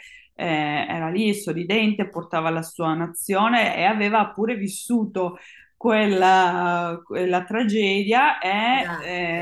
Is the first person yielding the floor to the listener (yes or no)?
no